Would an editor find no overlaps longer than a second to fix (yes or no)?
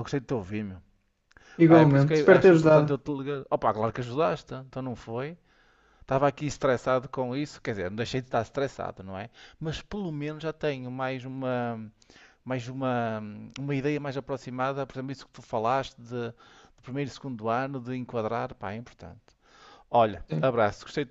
no